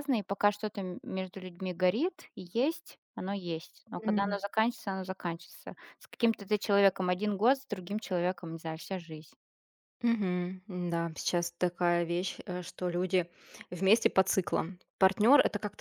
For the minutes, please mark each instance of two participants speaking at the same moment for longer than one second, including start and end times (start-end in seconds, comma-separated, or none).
none